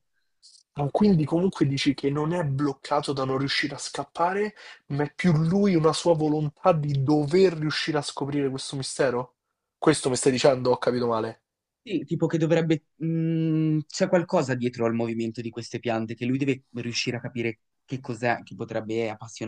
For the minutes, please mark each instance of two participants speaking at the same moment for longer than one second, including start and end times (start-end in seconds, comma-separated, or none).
none